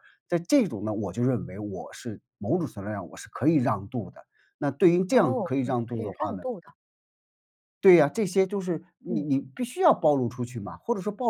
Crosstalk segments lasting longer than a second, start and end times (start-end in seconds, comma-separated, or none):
5.1-6.4